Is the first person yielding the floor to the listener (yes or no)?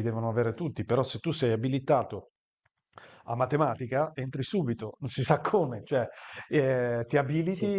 no